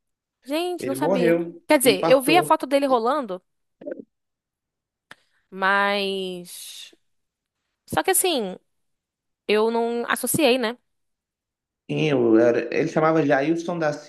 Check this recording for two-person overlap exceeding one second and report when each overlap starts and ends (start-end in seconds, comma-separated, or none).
0.8-2.6